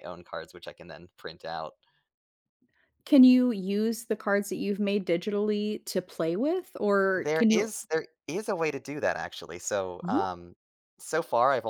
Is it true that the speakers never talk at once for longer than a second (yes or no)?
yes